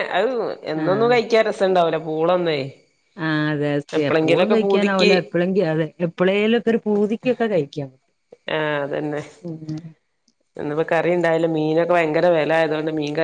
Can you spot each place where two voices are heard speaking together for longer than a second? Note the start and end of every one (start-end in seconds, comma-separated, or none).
none